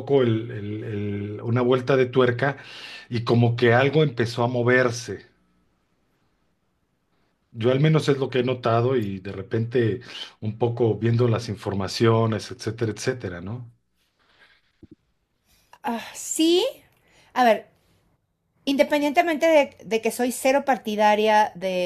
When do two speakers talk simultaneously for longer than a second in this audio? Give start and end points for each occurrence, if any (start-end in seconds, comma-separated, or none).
none